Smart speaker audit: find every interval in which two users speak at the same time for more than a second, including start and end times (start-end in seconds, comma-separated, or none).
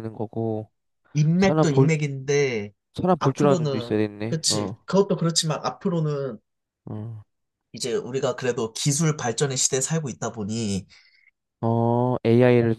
3.2-4.8